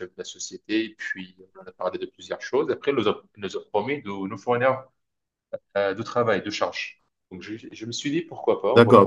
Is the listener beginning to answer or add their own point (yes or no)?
yes